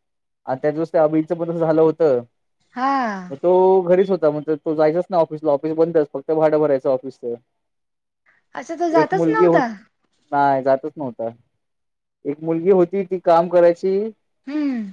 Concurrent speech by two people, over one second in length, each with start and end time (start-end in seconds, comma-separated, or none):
none